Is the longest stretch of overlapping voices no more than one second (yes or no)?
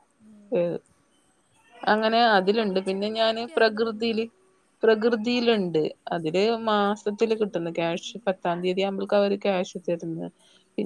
no